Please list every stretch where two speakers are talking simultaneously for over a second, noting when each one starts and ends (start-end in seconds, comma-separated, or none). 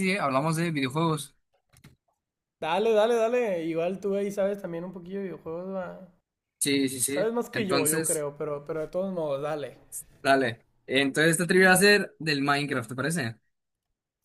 7.0-8.2